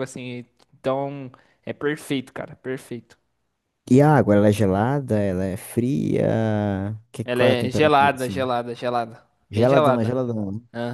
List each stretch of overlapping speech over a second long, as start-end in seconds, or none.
7.2-8.5